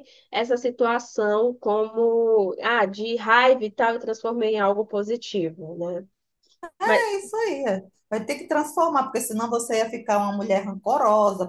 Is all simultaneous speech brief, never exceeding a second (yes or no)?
yes